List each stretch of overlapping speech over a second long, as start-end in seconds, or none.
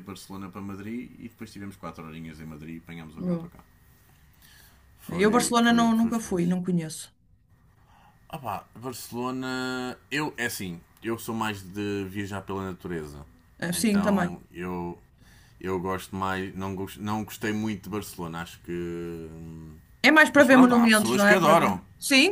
5.2-6.6, 20.4-21.8